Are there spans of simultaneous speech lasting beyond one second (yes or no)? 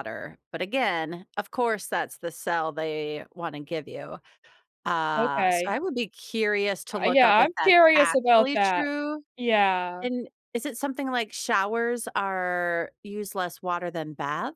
yes